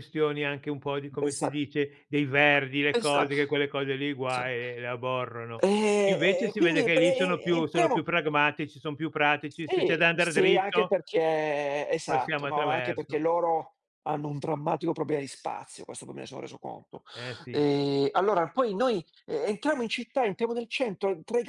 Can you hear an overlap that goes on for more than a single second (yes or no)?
yes